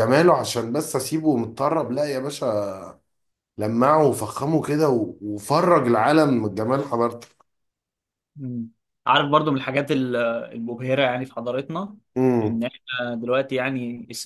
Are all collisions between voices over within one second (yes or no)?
yes